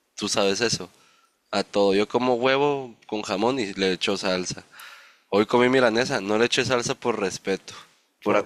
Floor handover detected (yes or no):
no